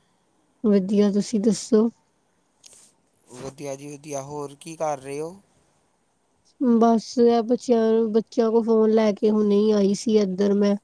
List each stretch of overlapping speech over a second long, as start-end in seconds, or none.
none